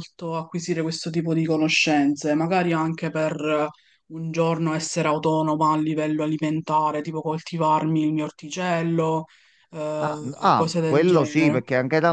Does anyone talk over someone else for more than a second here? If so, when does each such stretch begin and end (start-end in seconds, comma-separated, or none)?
10.0-11.6